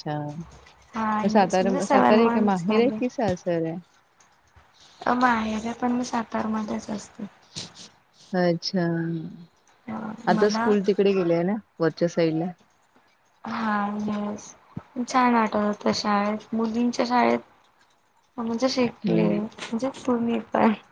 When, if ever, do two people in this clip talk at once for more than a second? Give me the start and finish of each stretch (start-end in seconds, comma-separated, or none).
1.3-3.0